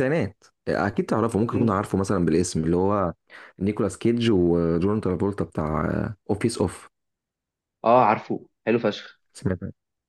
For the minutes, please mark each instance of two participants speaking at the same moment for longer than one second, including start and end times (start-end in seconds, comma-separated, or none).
none